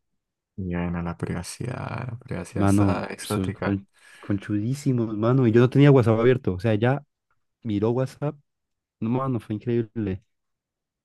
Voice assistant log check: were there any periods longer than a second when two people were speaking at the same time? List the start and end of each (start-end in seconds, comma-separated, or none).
2.5-3.8